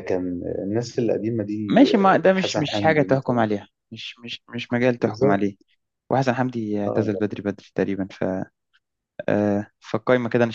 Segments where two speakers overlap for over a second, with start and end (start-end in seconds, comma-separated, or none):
1.7-3.4